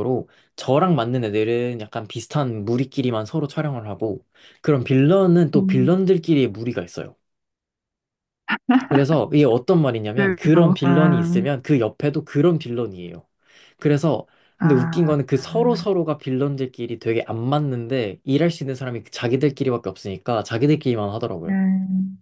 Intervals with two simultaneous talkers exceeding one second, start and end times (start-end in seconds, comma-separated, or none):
10.2-11.4